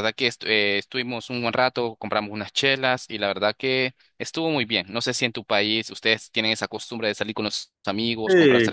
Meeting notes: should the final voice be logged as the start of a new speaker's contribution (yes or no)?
yes